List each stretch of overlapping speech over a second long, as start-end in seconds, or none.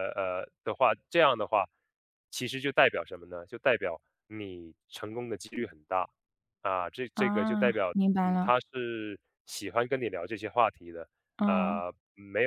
7.1-8.6